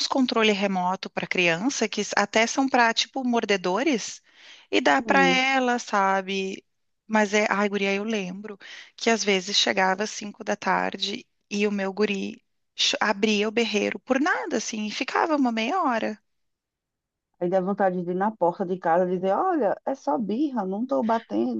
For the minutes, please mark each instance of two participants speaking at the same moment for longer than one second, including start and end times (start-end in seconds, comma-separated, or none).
none